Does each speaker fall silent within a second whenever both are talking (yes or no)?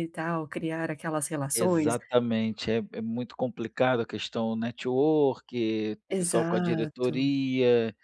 no